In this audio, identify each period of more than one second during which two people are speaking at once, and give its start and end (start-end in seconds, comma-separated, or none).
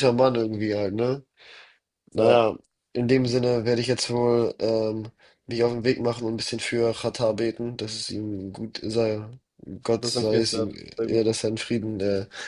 10.0-11.3